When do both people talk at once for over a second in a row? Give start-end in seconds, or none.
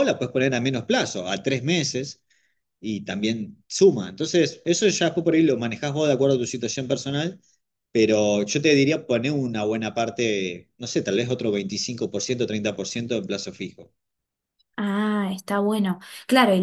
none